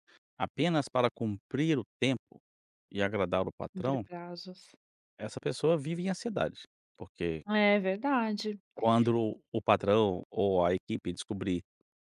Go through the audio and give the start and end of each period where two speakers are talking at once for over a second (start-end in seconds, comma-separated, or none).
none